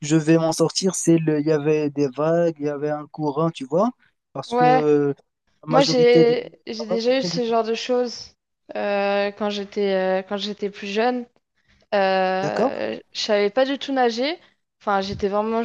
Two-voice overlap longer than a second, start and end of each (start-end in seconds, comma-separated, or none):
5.7-7.5